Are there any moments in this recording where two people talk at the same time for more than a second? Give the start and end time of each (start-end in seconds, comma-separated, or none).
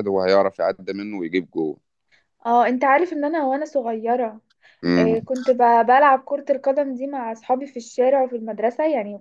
none